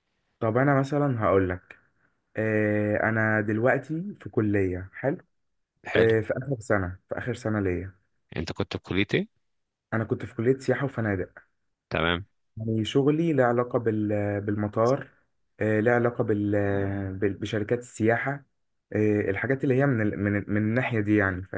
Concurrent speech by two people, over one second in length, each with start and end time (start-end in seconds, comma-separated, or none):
none